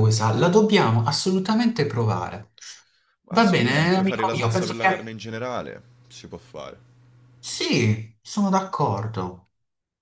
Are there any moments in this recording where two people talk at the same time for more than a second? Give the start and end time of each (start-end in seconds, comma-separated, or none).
3.3-4.9